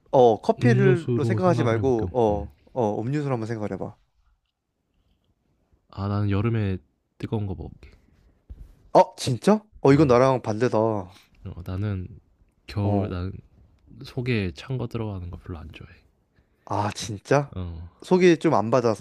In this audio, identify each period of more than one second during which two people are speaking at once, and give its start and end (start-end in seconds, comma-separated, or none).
0.6-2.5